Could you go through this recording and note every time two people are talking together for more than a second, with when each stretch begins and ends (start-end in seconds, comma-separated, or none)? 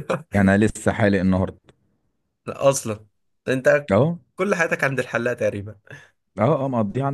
none